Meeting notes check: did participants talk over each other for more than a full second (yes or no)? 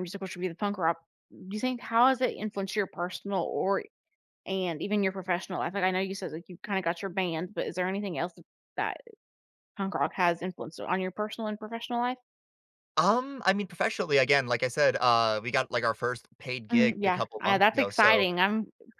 yes